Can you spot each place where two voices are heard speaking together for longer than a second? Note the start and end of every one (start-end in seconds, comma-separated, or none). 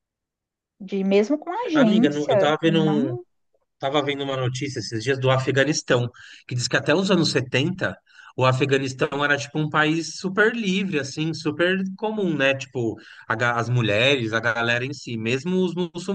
1.7-3.2